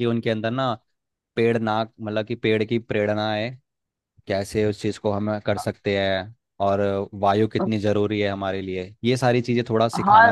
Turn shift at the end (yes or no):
yes